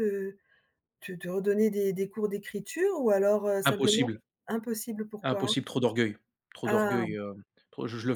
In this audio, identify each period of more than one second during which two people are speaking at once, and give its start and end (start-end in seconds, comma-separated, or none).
none